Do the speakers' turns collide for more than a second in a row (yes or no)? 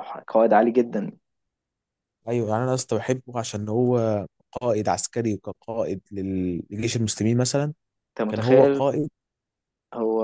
no